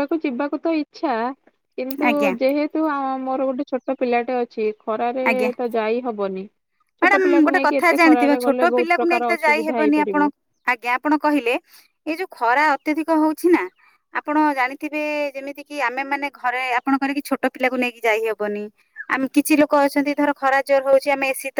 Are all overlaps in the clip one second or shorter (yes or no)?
no